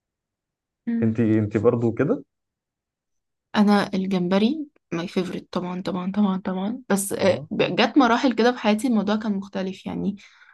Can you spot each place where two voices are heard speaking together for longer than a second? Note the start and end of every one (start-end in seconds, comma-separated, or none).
none